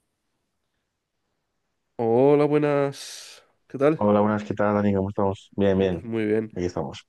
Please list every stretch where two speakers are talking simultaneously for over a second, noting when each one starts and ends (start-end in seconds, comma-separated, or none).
none